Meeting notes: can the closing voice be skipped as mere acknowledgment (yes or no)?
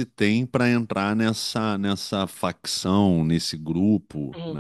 no